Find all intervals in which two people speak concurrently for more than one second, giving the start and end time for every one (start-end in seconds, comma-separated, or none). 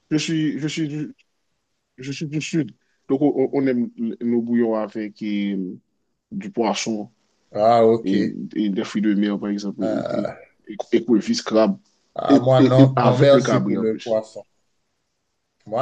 12.3-14.2